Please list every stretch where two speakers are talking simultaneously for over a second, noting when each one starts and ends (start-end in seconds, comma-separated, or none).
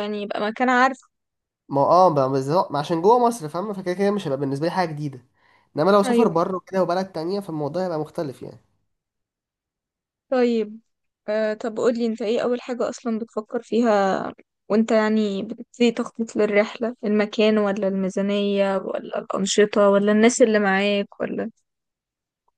none